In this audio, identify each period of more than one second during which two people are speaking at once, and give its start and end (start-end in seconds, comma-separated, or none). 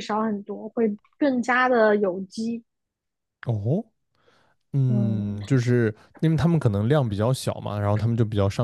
none